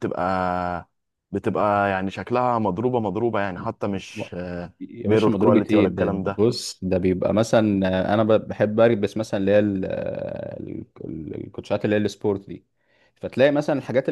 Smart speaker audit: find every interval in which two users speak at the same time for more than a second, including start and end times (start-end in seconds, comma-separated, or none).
5.1-6.4